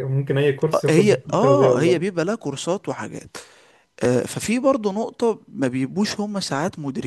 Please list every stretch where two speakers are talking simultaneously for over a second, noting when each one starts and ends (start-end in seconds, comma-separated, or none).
0.7-2.1